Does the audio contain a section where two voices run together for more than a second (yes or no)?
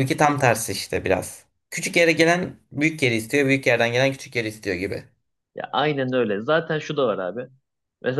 no